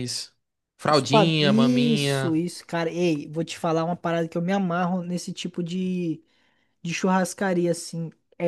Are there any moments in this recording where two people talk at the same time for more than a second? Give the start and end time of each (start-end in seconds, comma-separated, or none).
0.9-2.4